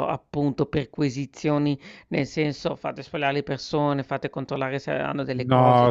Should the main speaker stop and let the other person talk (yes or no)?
yes